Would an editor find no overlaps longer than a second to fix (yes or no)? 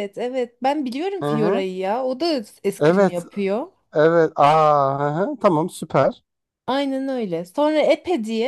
yes